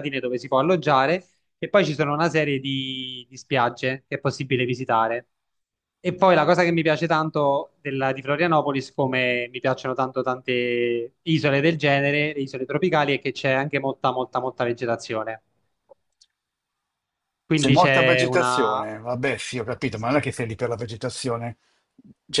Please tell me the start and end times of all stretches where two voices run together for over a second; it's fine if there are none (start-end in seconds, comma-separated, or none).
17.5-18.9